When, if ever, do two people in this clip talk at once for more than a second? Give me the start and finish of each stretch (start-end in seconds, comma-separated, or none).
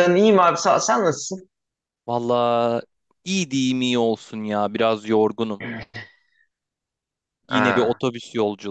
none